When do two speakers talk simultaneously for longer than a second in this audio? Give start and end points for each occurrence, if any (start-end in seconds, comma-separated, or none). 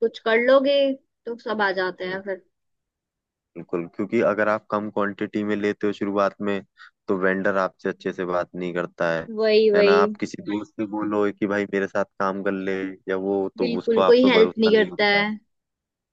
13.6-15.2